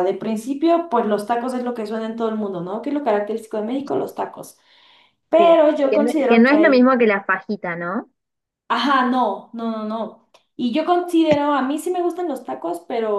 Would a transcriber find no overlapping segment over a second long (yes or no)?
no